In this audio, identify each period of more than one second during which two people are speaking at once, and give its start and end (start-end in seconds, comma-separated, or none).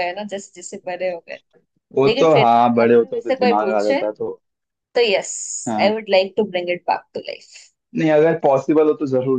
2.0-4.0